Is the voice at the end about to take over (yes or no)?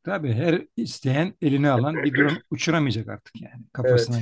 yes